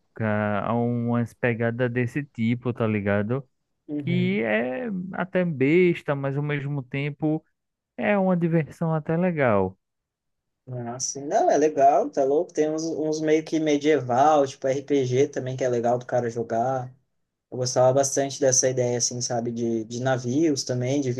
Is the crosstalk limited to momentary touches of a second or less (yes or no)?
yes